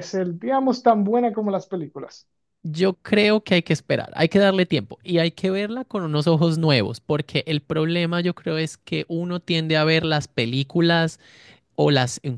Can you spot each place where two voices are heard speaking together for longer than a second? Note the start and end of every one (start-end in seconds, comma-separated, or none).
none